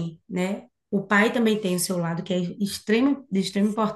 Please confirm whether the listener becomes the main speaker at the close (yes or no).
no